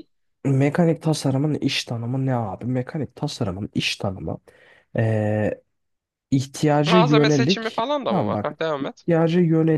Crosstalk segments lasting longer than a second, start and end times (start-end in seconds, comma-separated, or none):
6.9-9.1